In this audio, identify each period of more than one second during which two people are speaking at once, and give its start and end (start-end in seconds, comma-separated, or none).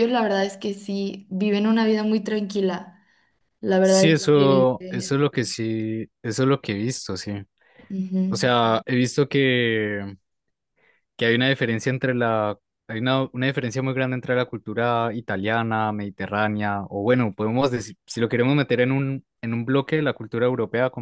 3.8-5.2